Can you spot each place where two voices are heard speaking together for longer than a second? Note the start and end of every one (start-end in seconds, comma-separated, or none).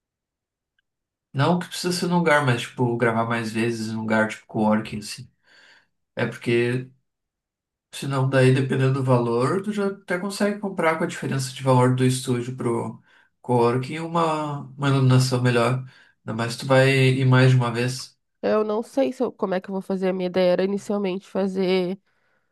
none